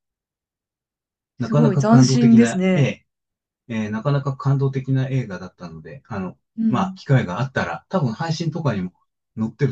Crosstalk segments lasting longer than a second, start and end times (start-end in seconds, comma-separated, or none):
1.4-3.0